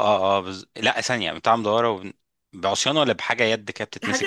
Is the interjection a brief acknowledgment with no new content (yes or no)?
no